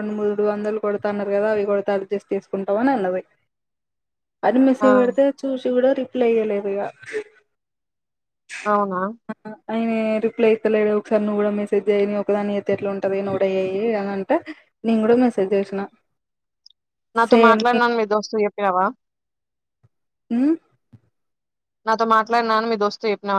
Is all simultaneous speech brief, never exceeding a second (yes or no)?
yes